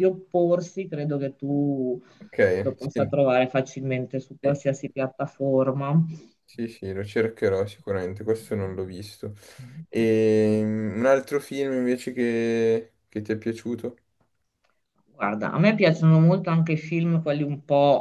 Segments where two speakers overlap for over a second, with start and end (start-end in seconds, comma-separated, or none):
none